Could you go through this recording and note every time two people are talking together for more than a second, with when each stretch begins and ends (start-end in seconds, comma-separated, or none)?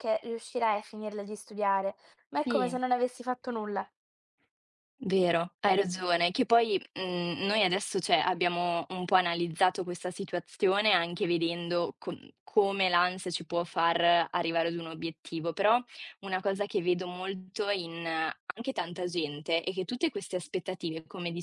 none